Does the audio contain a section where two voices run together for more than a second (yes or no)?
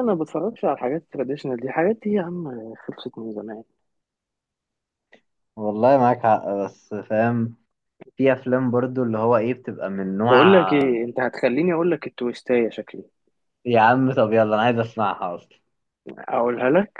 no